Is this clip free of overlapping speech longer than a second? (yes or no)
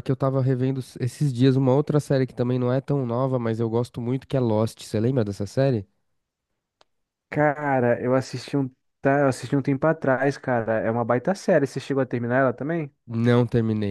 yes